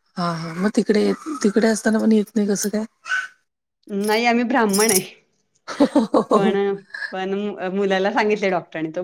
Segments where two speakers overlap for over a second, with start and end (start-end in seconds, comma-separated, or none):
none